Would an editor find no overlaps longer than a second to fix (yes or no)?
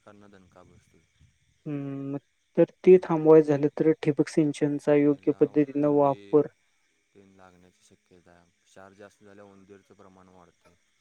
yes